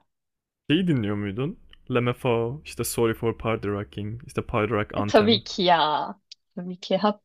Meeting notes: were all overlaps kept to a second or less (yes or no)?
yes